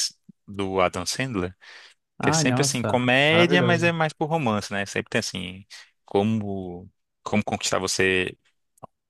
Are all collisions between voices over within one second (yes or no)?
no